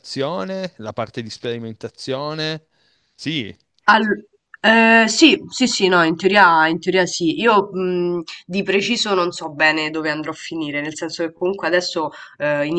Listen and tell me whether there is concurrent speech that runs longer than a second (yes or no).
no